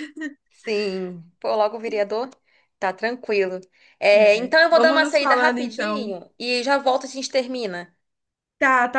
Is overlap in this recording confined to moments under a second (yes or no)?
no